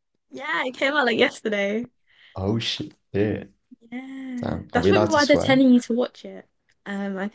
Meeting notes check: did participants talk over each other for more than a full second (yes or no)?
yes